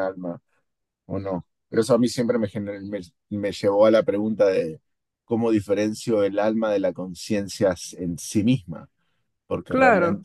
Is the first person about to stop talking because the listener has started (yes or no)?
no